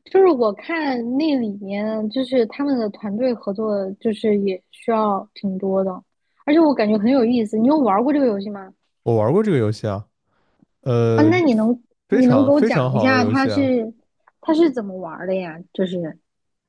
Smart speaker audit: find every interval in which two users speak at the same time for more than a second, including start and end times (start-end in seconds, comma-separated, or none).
12.1-13.7